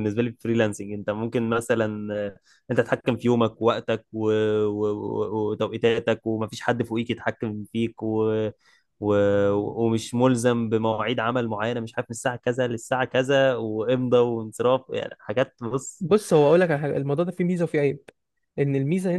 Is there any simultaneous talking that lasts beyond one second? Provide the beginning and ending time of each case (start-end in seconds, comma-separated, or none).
none